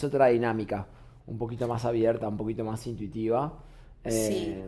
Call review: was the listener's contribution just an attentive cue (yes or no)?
yes